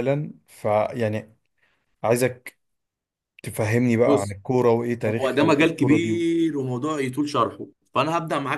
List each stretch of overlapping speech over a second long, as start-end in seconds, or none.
5.0-6.3